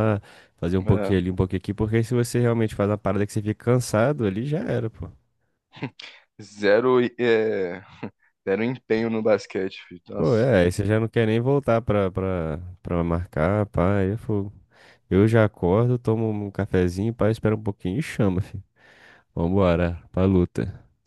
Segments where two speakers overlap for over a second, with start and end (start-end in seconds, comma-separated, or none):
none